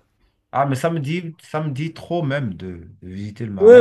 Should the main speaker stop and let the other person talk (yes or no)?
yes